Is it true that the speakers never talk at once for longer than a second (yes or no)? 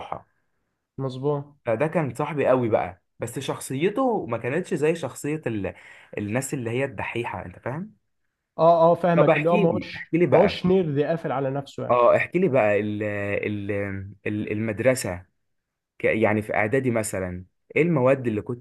no